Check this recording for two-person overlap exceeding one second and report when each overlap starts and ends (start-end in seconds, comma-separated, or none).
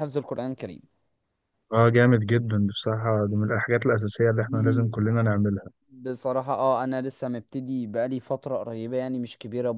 none